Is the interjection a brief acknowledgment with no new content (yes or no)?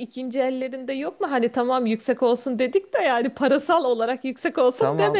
no